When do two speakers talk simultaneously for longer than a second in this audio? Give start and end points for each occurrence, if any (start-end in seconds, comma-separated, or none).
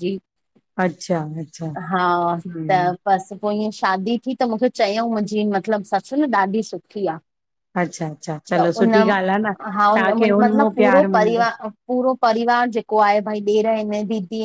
9.9-11.4